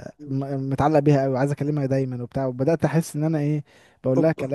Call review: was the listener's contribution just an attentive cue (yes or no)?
yes